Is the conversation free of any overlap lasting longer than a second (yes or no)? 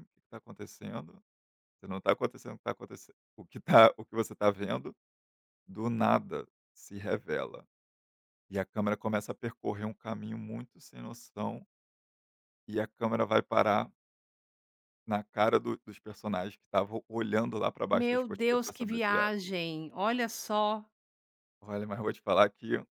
no